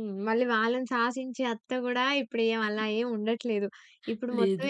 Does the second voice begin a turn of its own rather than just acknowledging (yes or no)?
no